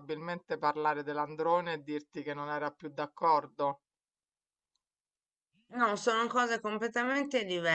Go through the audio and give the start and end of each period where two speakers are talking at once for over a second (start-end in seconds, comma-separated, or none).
none